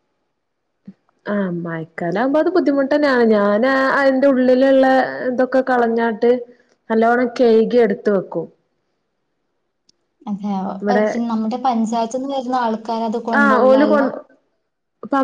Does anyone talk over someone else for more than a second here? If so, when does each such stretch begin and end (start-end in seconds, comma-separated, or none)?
none